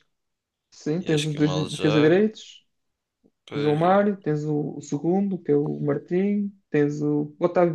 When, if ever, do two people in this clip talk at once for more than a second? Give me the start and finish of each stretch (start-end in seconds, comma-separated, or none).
1.0-2.2